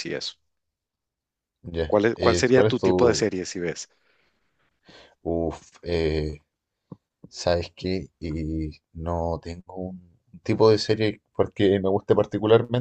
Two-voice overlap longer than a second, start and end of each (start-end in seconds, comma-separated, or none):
1.9-3.3